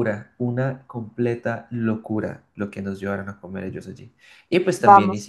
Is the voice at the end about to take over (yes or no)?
yes